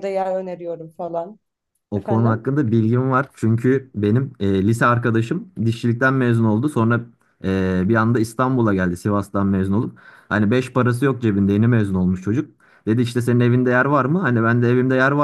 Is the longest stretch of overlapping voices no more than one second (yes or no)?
yes